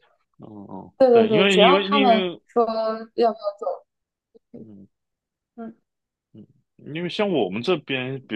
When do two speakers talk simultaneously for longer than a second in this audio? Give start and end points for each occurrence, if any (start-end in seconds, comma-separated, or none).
1.0-2.4